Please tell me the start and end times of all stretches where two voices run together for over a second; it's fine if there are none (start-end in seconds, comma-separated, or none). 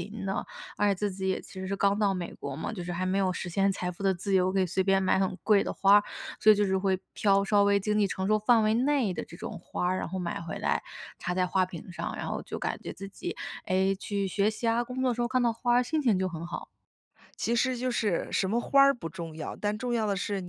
none